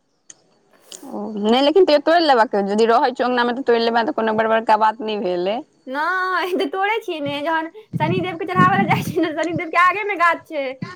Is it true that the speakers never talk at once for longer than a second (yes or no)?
yes